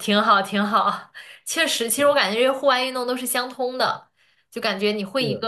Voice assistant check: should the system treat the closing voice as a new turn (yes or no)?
no